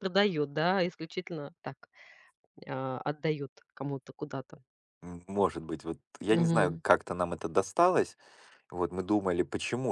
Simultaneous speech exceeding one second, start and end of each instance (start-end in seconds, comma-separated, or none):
none